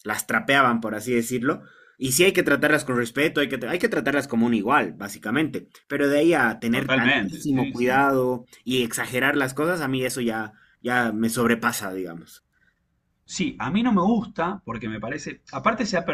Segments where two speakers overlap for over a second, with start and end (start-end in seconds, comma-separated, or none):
6.7-8.0